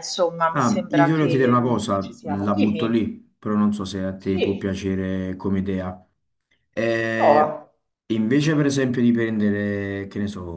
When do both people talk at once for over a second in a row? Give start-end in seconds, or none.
0.5-3.0